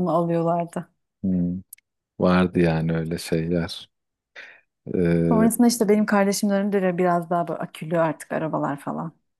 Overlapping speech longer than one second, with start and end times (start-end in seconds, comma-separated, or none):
none